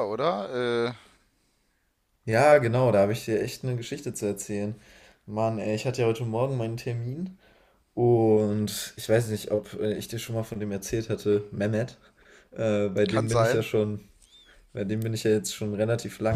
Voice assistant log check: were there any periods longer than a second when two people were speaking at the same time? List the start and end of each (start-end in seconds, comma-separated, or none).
none